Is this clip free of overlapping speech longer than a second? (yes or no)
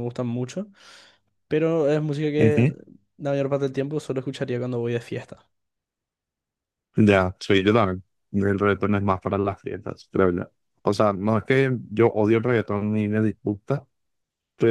yes